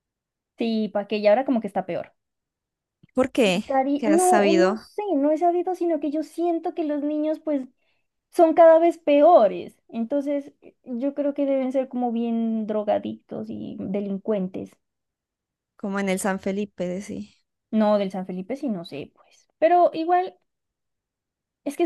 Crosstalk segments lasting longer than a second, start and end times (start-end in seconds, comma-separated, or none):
3.4-4.9